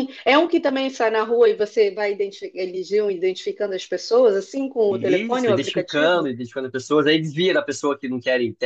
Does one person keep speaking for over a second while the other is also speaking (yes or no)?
yes